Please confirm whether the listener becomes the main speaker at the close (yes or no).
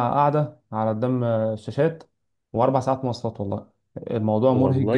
yes